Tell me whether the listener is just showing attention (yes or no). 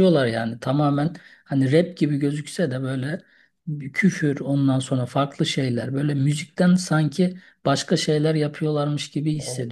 no